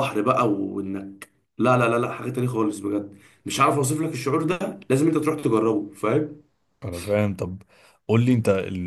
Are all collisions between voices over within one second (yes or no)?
yes